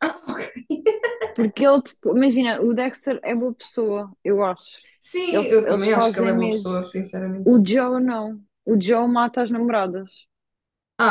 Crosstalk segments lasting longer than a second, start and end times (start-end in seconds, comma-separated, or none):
5.3-6.7